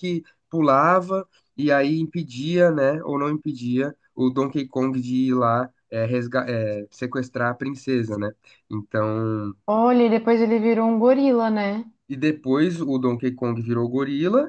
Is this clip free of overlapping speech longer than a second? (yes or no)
yes